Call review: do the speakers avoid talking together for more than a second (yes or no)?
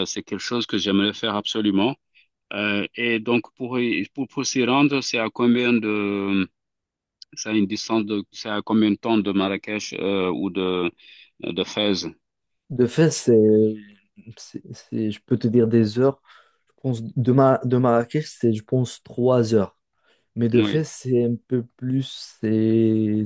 yes